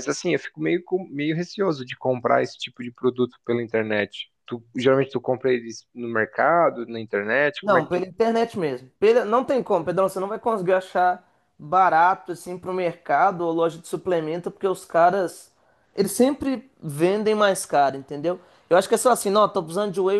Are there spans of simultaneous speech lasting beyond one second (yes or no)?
no